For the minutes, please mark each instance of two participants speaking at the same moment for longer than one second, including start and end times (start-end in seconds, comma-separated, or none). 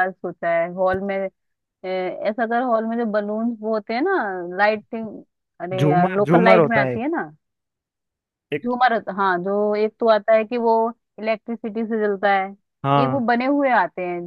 5.8-7.0